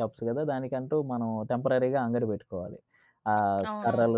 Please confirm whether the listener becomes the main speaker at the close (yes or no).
no